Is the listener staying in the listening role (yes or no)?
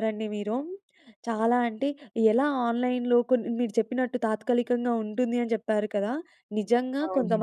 yes